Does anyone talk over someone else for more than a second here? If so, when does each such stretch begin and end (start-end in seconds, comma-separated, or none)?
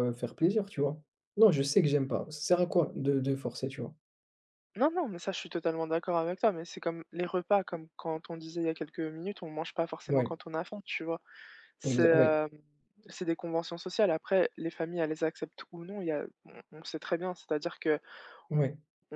none